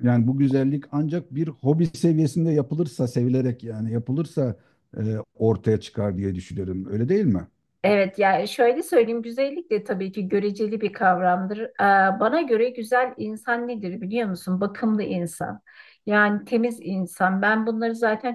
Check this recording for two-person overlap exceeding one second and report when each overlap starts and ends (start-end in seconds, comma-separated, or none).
none